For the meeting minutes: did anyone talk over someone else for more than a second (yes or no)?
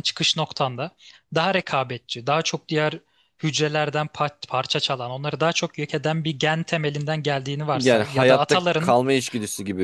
yes